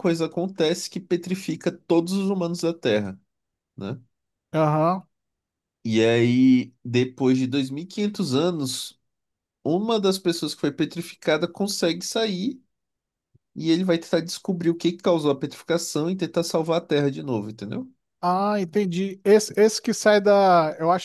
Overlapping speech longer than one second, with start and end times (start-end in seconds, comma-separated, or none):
none